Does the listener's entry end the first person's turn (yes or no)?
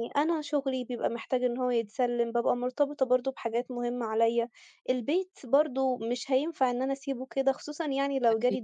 no